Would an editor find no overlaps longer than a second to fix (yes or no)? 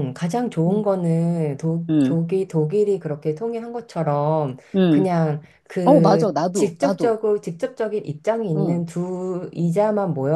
no